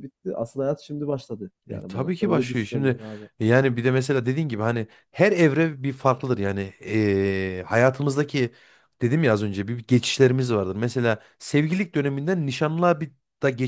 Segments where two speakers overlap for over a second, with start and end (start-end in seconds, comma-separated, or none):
1.7-3.0